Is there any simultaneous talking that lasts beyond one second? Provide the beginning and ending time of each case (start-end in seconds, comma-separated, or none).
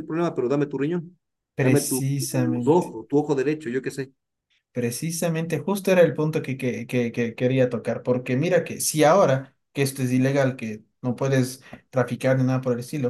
1.6-2.9